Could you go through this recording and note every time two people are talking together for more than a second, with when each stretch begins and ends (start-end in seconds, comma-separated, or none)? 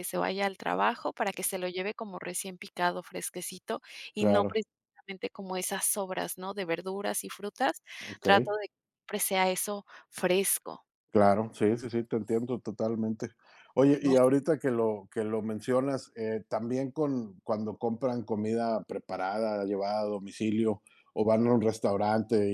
none